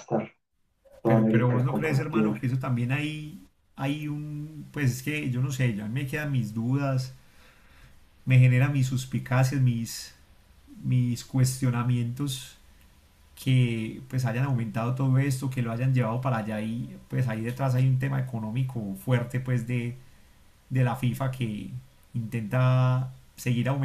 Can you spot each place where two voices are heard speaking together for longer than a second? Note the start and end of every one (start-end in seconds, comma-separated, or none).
1.1-2.3